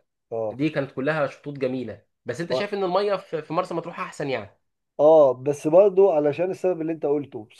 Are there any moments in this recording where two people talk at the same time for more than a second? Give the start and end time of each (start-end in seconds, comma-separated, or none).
none